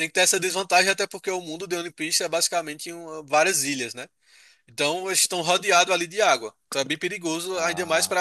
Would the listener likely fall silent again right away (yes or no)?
yes